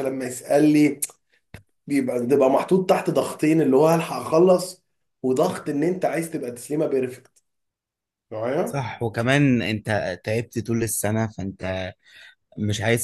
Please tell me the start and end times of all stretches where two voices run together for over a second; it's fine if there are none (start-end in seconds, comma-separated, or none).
none